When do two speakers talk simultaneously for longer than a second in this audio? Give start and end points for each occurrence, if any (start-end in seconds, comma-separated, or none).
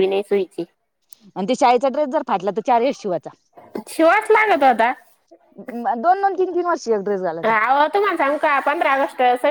none